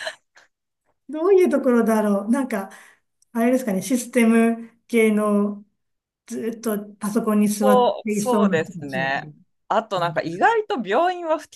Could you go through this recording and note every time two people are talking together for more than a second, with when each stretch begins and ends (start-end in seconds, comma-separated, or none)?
7.6-9.3